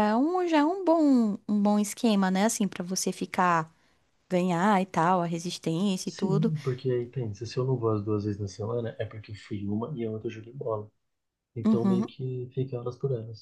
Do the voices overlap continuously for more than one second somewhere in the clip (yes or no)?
no